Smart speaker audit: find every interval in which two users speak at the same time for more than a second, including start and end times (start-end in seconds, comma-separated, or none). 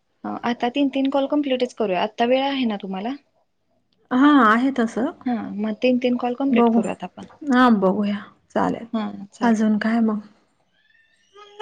none